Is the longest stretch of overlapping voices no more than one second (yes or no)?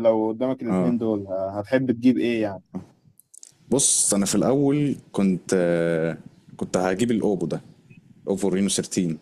yes